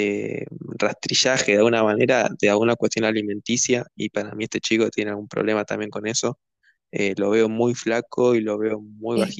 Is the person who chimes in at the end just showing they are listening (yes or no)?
no